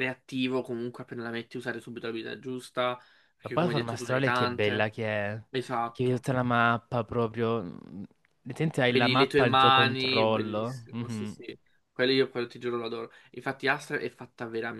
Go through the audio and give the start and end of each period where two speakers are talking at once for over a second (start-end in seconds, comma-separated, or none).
3.4-4.9, 8.9-11.4